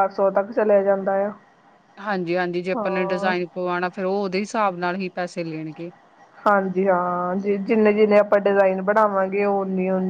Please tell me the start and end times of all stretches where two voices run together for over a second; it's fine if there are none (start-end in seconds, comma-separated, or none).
none